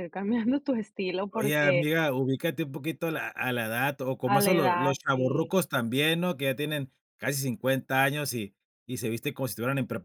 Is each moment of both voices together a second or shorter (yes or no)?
no